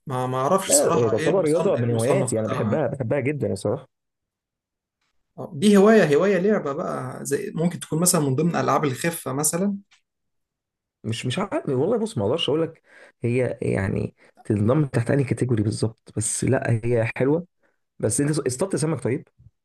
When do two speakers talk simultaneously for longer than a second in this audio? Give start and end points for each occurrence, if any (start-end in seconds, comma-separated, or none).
0.7-2.8